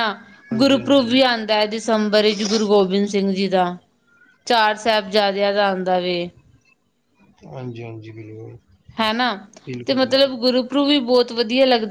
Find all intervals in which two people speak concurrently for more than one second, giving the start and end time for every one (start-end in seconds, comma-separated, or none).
none